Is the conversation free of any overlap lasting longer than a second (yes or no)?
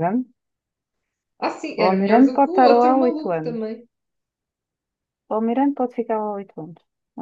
no